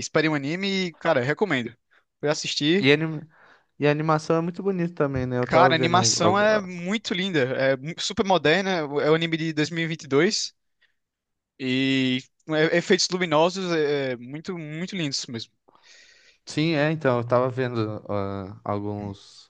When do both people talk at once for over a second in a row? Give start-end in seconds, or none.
5.5-6.7